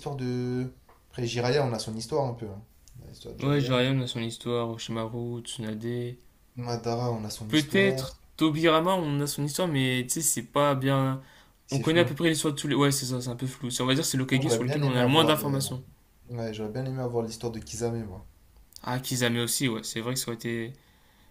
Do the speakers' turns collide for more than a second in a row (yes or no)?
yes